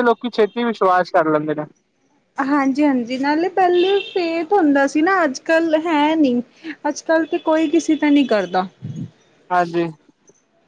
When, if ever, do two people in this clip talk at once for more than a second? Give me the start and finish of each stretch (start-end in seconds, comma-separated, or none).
none